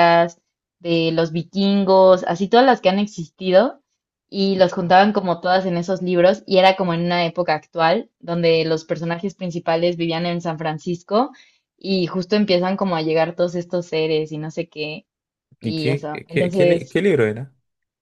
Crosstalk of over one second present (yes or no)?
yes